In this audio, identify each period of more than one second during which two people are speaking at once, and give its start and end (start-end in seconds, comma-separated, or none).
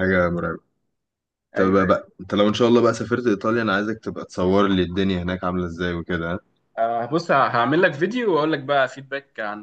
none